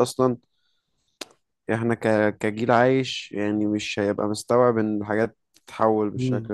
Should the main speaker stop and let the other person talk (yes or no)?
yes